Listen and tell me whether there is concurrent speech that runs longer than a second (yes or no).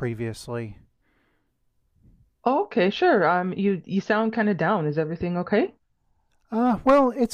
no